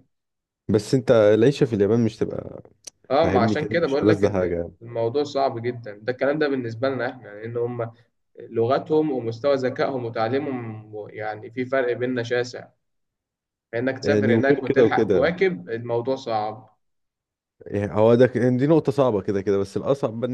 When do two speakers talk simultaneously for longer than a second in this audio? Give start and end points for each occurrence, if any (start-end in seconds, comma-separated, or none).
3.2-4.7, 14.0-15.3